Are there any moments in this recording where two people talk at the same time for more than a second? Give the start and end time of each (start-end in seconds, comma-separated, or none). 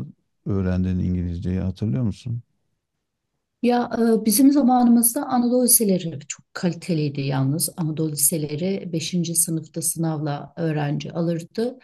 none